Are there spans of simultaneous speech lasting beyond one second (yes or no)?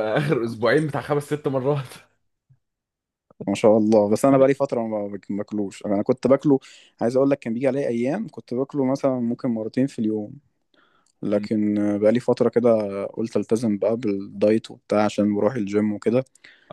no